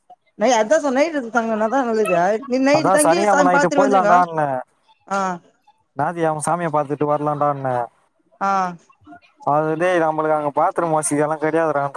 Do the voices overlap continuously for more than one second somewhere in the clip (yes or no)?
yes